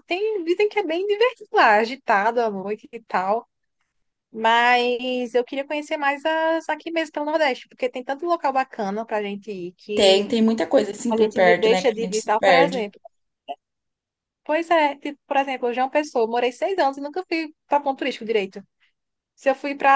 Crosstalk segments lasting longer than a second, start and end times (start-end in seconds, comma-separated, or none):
11.1-12.9